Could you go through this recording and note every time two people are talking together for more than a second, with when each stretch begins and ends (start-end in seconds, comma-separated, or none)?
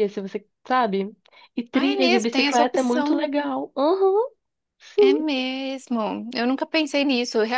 1.7-3.3